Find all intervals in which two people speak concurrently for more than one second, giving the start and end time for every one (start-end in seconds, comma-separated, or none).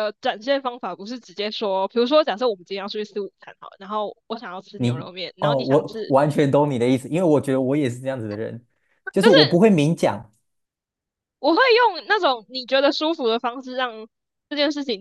4.8-6.2